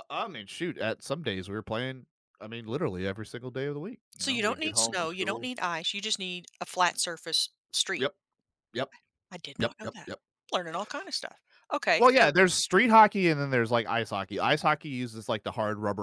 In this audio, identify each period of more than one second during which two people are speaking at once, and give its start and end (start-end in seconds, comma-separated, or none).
4.2-5.5